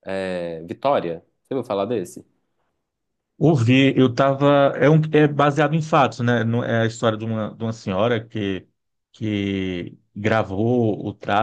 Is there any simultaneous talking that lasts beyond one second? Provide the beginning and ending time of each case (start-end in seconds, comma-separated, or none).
none